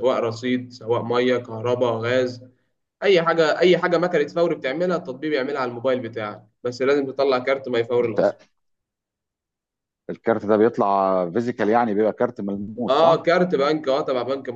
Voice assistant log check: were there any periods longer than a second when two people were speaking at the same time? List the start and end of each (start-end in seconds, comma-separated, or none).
none